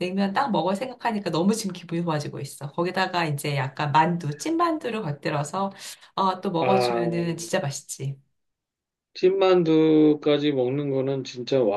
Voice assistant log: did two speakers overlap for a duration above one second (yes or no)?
no